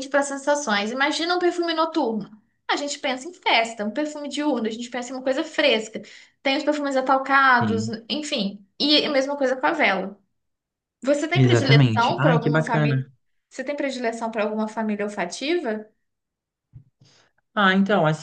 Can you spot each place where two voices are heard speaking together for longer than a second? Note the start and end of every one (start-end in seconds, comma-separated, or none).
11.3-13.0